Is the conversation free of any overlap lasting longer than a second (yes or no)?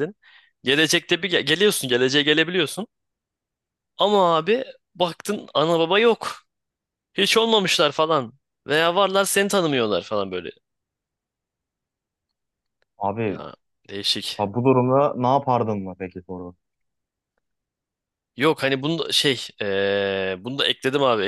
yes